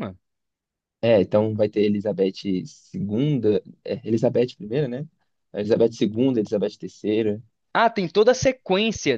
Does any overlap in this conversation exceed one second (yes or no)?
no